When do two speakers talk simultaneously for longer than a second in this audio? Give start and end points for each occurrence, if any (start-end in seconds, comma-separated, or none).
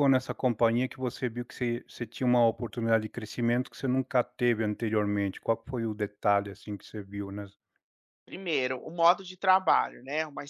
none